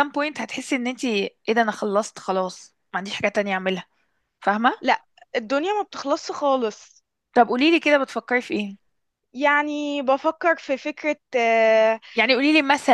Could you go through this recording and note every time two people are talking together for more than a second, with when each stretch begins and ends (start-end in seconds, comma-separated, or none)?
none